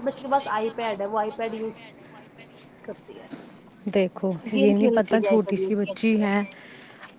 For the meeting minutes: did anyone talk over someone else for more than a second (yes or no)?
yes